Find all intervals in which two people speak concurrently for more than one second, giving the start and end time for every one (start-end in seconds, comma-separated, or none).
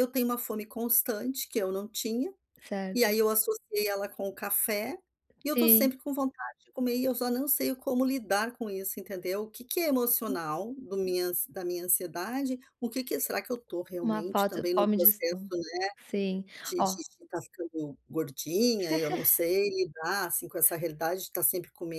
14.0-15.6